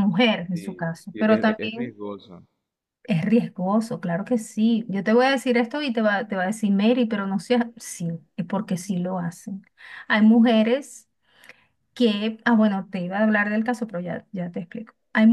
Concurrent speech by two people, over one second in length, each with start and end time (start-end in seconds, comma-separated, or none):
0.5-2.0